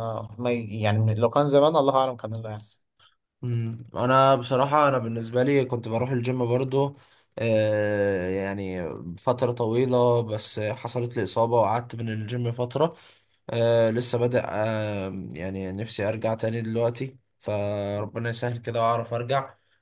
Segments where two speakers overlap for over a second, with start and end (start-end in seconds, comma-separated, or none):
none